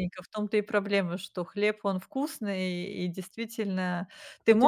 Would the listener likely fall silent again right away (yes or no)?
yes